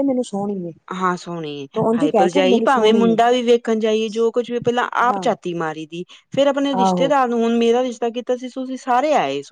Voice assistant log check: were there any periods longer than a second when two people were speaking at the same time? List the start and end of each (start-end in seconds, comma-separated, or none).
none